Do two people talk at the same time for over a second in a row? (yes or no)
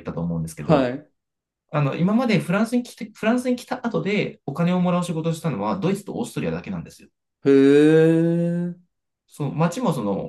no